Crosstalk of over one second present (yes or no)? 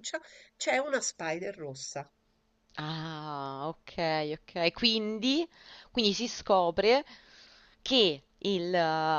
no